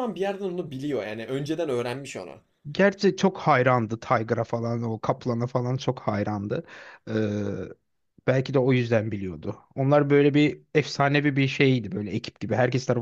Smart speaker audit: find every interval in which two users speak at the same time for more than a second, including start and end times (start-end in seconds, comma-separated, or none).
none